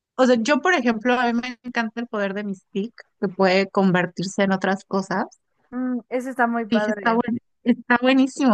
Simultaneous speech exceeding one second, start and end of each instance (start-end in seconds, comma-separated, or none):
none